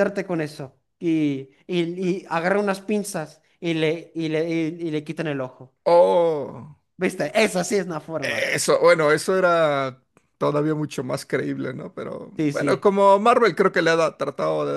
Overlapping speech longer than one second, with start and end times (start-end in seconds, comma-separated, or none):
none